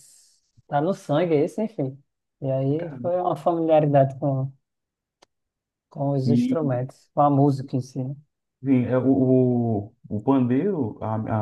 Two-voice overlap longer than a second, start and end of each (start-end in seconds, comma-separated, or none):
none